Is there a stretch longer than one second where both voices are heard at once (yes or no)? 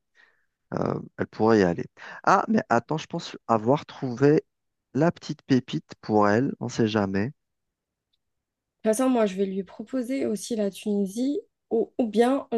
no